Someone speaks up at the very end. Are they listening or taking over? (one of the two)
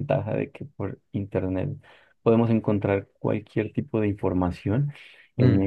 listening